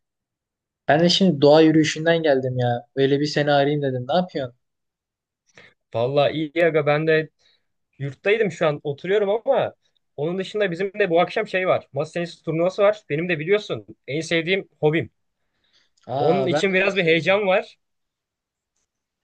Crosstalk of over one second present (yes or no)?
yes